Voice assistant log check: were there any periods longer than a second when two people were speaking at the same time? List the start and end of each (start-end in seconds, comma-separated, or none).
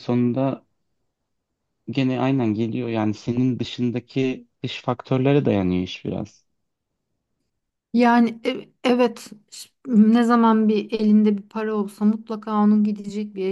none